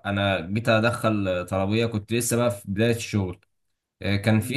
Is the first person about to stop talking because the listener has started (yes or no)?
no